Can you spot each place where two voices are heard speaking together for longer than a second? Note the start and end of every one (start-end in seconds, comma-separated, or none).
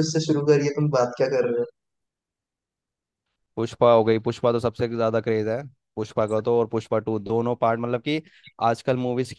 none